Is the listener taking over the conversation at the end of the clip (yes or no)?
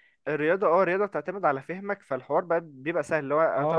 no